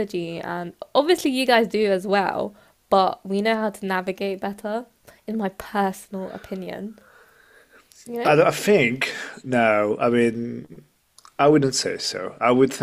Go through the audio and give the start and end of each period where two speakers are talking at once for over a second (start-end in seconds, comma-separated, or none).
none